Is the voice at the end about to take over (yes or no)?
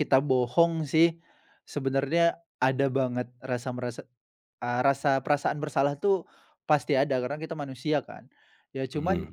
no